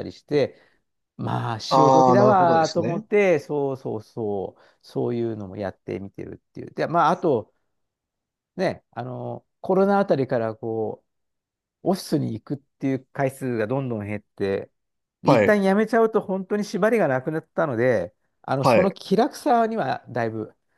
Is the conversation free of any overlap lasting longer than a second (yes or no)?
no